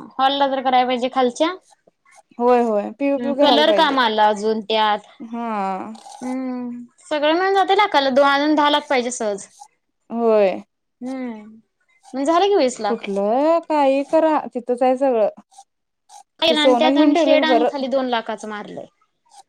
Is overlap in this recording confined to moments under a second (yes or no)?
no